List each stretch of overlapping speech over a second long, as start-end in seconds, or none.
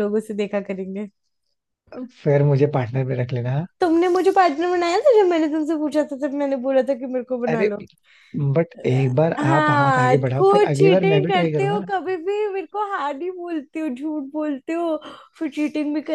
9.4-11.8